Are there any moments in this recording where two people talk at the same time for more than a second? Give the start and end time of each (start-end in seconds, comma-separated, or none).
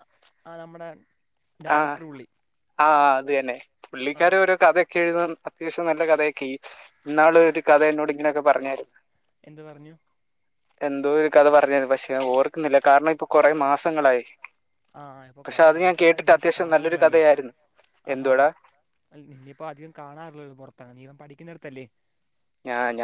15.4-17.2